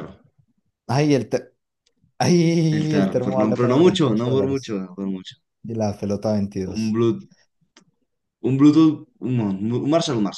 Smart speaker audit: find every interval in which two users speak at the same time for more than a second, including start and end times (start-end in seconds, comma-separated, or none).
2.7-4.8